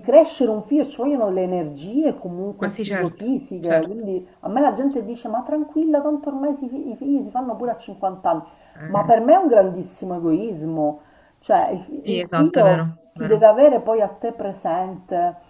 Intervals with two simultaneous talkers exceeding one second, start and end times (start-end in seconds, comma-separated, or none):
2.6-4.0, 12.0-13.5